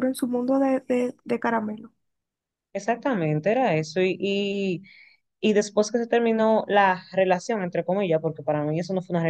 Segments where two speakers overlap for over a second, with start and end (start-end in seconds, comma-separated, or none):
none